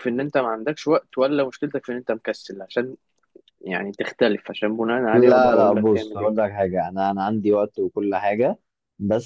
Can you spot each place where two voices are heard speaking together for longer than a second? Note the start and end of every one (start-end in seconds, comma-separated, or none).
5.1-6.3